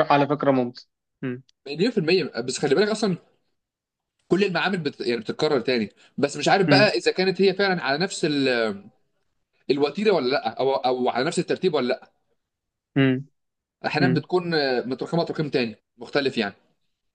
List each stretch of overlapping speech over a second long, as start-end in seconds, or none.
none